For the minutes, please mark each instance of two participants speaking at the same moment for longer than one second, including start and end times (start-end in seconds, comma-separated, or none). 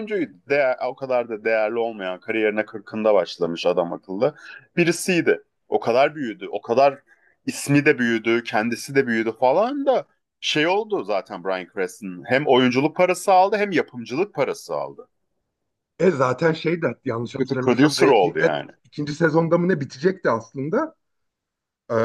17.4-18.7